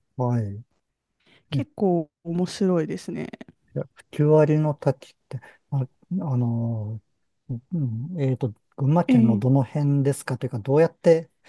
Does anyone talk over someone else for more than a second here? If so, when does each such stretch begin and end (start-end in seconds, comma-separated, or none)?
none